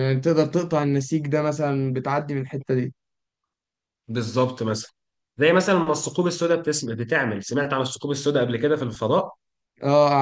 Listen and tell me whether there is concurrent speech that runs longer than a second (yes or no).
no